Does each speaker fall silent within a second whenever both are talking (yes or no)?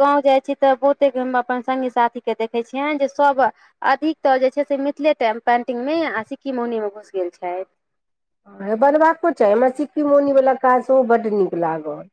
yes